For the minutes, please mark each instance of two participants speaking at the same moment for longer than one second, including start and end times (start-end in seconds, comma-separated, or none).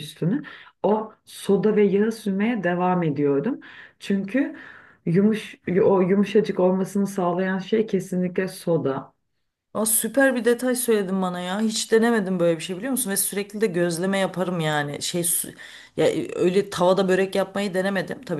none